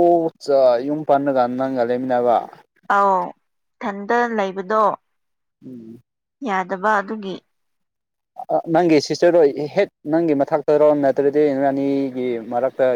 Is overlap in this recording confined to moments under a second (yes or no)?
yes